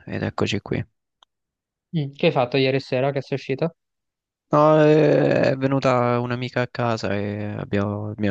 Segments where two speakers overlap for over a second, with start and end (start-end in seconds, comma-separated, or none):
none